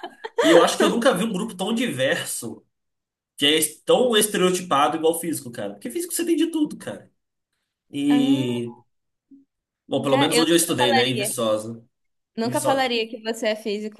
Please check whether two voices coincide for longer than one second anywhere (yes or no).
yes